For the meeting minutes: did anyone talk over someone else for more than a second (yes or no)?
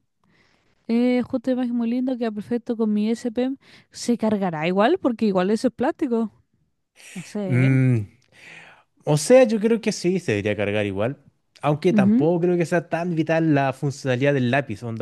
no